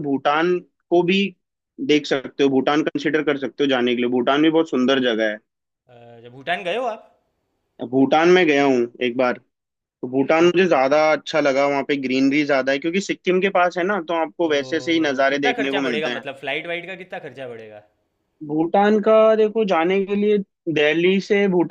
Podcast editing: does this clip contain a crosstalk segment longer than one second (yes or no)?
yes